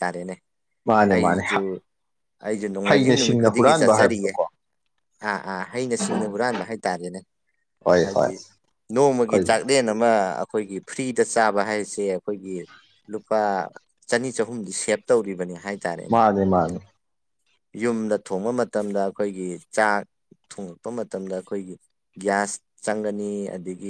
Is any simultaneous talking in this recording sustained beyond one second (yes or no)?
yes